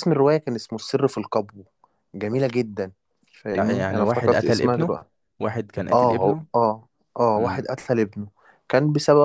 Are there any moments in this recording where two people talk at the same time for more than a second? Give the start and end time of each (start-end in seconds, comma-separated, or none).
3.6-5.0